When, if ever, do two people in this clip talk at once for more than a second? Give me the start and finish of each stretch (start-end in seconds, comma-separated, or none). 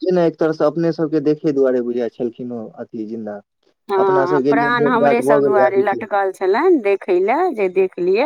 4.0-6.0